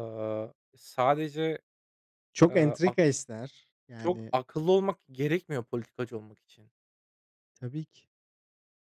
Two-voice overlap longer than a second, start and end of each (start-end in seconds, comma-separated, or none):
none